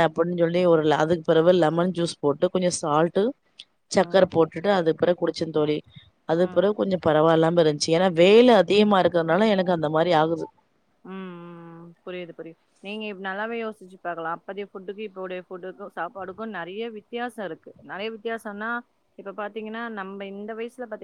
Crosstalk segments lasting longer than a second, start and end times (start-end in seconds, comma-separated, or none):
none